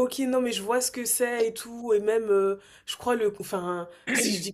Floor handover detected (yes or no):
no